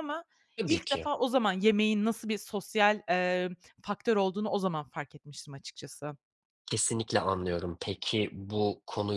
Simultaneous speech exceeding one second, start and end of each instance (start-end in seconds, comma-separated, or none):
none